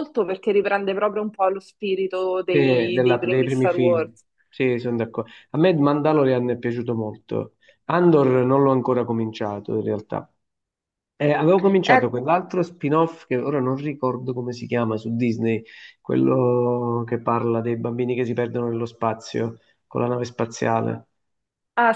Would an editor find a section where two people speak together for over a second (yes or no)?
yes